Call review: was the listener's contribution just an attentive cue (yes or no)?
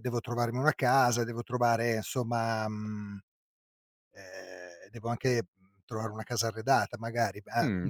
no